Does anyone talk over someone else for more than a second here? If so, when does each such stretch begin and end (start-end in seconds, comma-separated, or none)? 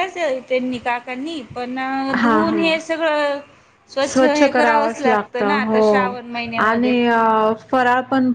4.2-5.8